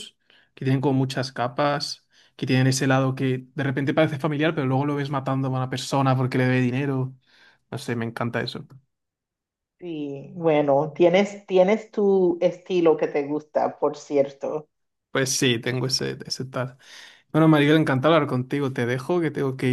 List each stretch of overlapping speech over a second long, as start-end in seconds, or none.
none